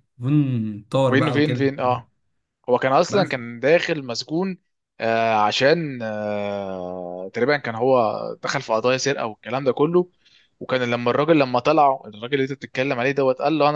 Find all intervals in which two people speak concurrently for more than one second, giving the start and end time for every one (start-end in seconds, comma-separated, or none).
none